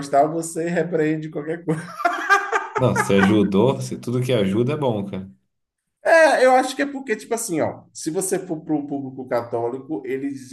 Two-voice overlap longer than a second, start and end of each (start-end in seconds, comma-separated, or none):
none